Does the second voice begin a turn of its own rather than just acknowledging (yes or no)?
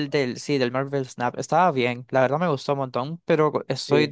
no